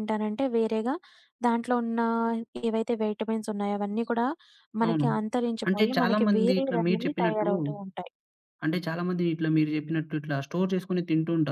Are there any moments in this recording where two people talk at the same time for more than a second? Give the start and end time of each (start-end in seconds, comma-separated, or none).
5.7-7.5